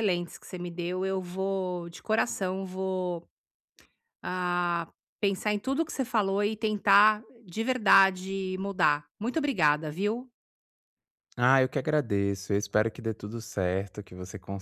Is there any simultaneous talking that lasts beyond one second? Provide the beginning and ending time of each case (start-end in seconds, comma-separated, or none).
none